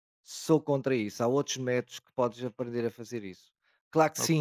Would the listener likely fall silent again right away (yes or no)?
yes